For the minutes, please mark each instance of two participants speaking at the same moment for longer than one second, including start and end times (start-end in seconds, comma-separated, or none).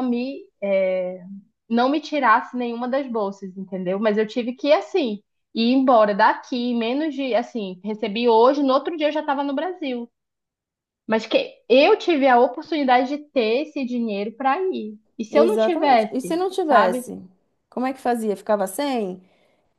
15.3-17.0